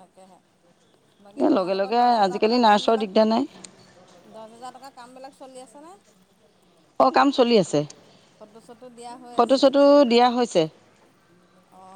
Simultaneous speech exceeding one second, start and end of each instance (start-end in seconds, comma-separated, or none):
1.6-3.2